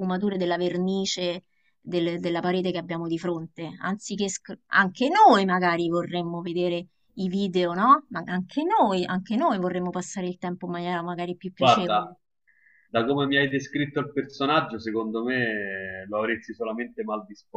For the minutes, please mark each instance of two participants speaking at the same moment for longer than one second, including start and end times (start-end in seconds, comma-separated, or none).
none